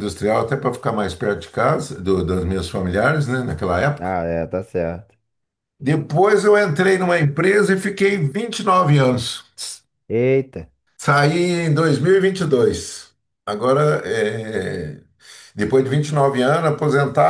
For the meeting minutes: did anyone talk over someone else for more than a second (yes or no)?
no